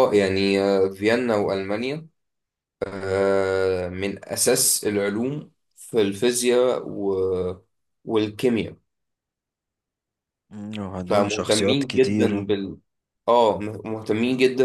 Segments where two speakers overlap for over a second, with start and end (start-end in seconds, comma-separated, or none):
11.0-12.4